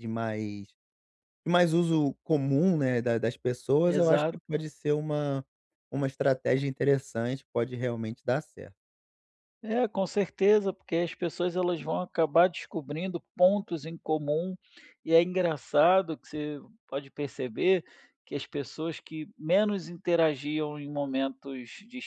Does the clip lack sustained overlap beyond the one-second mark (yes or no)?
yes